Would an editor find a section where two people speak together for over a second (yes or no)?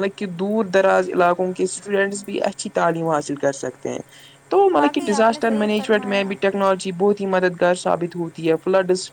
yes